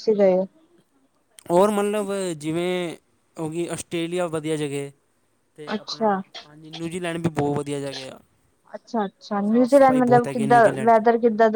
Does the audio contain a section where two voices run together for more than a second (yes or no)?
yes